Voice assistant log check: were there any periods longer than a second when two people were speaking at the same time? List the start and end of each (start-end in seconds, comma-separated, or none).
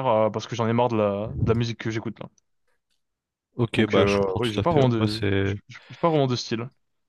3.8-5.5